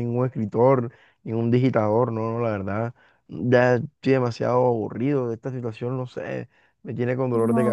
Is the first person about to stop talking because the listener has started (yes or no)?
yes